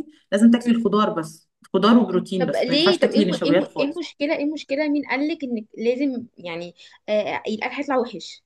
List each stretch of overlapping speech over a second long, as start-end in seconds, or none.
2.4-4.0